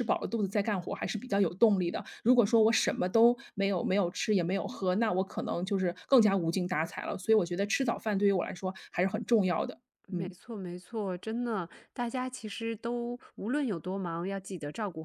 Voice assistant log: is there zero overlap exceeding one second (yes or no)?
yes